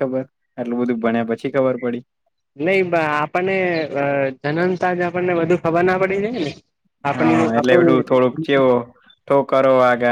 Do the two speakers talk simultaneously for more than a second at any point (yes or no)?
yes